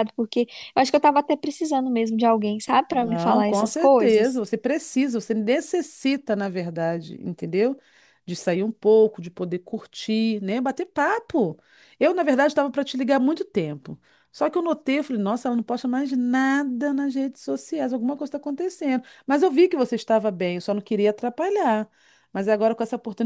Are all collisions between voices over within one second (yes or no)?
no